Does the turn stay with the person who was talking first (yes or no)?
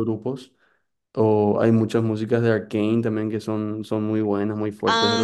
no